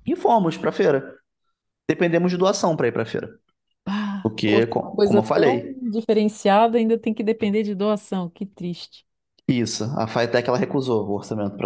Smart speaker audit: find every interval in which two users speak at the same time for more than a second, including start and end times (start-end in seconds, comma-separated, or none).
4.2-5.8